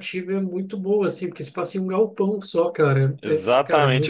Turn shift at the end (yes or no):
yes